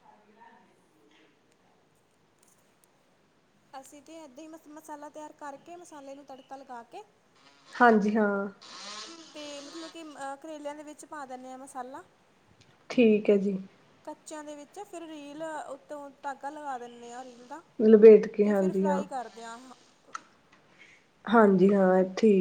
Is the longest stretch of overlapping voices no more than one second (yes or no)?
yes